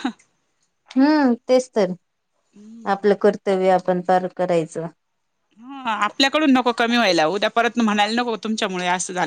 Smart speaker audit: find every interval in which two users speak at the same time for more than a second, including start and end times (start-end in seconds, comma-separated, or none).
none